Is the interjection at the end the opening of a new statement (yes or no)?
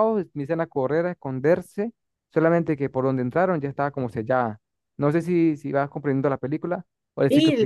yes